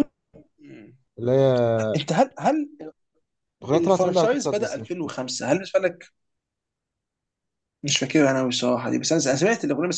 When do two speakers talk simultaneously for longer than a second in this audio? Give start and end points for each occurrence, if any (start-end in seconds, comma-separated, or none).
3.7-5.1